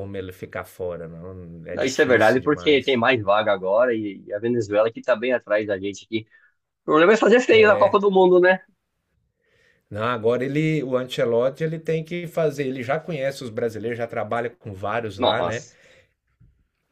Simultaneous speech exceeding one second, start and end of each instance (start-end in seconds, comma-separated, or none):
1.7-3.0